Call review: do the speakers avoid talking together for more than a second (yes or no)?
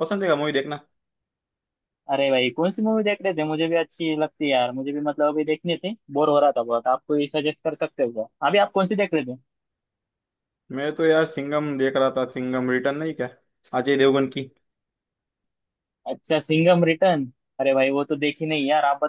yes